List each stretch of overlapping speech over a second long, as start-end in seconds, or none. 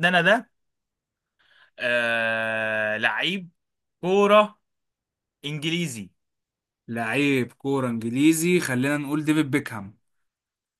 none